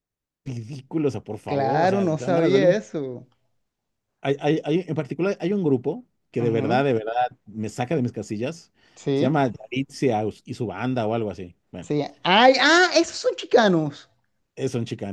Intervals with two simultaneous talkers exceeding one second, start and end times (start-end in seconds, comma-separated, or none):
1.4-2.8